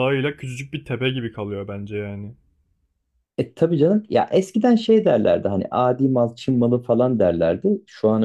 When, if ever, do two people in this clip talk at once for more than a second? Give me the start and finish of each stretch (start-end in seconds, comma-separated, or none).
none